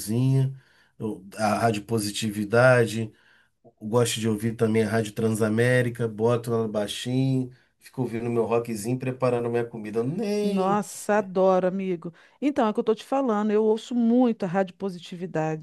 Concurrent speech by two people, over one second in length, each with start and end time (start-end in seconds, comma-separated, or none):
none